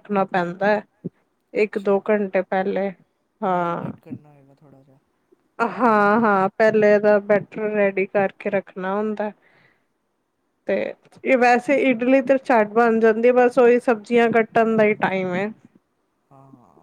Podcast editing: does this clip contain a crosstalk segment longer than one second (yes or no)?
no